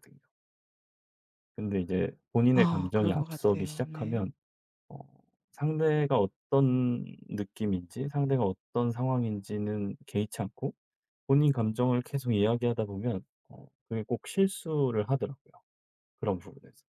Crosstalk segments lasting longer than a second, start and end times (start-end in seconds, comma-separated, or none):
2.5-4.3